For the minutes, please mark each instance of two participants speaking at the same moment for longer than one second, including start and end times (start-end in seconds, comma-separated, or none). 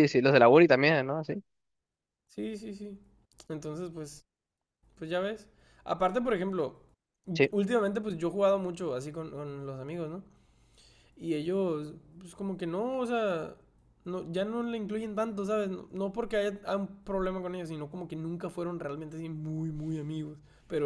none